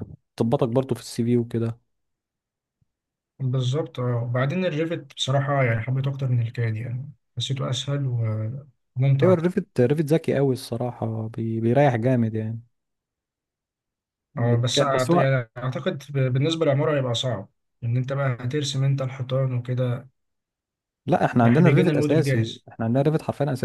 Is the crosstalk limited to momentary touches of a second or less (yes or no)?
no